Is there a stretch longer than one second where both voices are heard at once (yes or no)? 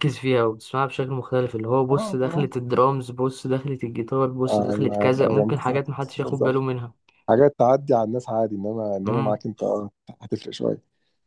yes